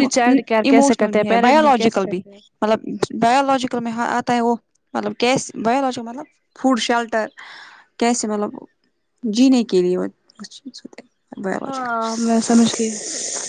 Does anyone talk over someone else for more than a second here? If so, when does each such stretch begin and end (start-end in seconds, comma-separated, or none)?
0.7-2.2